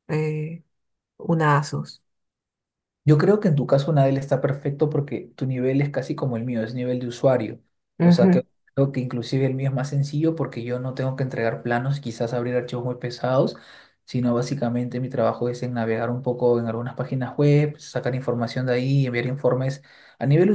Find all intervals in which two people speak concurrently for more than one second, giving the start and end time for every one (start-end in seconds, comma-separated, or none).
none